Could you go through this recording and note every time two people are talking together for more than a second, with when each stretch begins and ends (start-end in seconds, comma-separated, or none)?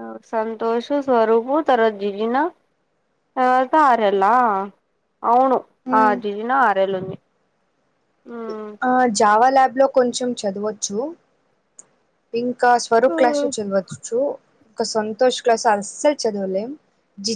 none